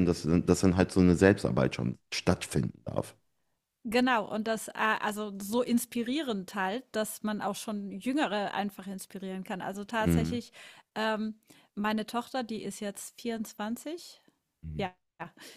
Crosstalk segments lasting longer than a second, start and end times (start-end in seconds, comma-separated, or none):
none